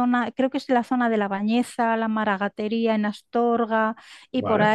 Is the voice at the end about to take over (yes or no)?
no